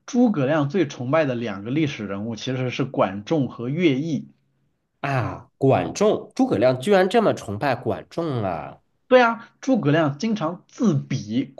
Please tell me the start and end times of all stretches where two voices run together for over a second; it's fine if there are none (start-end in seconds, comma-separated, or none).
none